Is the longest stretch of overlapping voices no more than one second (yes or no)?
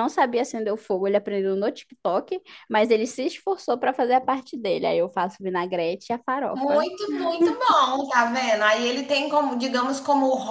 yes